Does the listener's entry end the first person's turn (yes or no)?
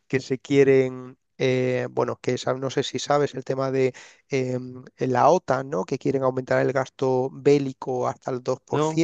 no